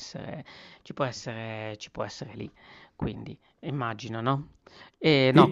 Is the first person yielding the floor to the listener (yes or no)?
no